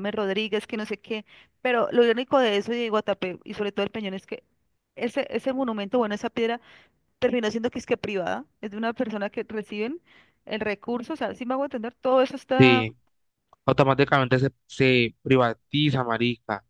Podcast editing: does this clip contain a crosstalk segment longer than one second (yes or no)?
no